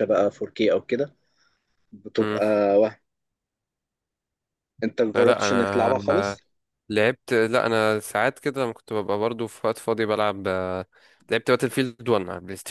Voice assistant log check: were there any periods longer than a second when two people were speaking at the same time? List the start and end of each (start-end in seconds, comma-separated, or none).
5.1-6.4